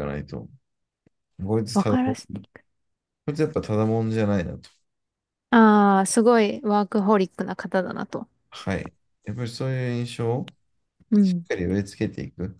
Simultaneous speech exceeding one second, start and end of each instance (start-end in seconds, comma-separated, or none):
none